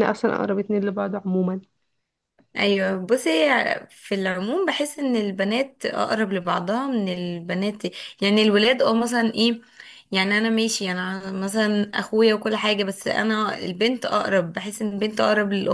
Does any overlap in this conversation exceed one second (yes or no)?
no